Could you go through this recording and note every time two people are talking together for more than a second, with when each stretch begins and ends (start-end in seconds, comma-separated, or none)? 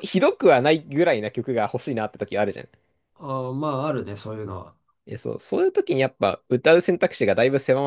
none